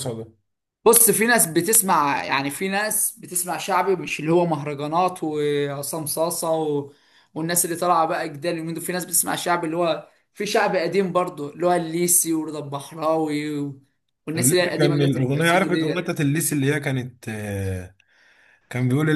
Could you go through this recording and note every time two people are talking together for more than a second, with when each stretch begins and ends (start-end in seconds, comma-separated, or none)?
14.4-16.1